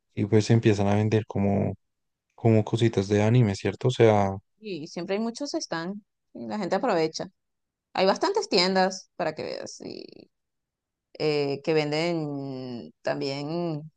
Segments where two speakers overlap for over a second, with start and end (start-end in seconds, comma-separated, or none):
none